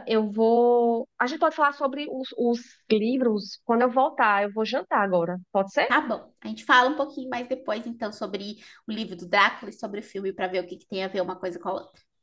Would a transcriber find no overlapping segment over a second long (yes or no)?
yes